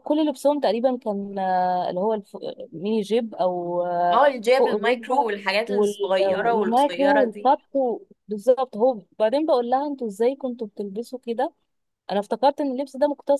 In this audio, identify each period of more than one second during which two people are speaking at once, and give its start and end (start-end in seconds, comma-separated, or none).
4.1-7.5